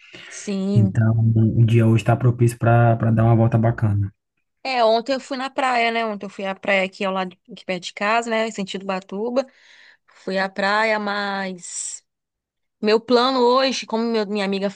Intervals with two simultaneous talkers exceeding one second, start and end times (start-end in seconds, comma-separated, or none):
none